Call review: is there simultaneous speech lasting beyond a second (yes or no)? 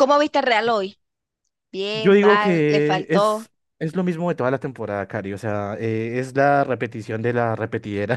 yes